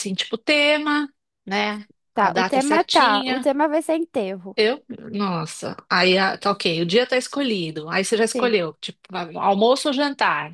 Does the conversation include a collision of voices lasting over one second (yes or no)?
yes